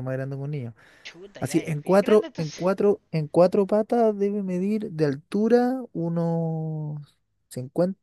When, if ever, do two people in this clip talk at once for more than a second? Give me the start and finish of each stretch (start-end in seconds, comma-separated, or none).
1.4-2.6